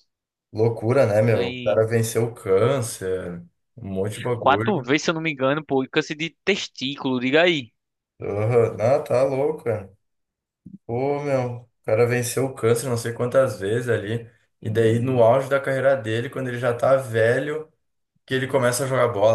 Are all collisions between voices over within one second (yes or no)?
yes